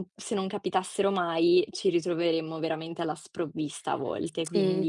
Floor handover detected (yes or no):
yes